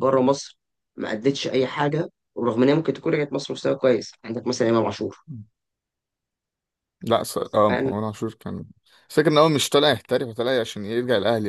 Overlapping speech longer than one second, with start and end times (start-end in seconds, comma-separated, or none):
none